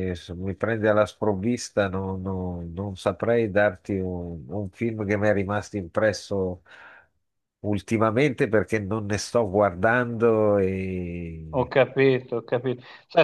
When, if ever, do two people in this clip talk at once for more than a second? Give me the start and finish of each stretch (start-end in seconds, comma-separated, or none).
none